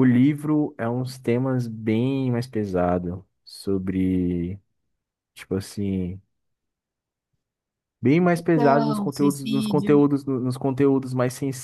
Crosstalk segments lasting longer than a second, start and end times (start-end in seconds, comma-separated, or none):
8.3-10.0